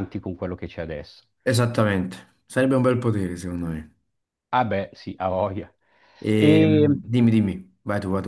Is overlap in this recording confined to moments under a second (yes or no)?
yes